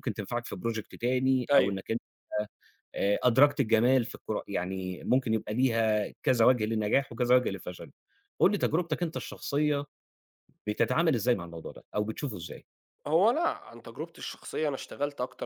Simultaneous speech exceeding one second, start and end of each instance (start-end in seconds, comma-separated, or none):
none